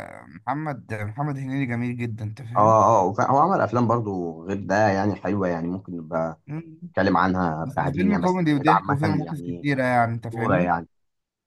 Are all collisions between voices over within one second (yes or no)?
no